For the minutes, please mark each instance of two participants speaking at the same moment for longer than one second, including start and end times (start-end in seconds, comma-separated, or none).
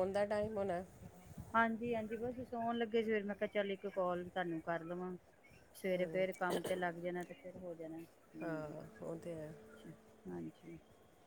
none